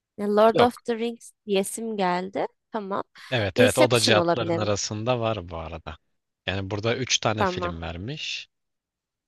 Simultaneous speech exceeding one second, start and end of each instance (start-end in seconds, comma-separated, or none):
3.5-4.7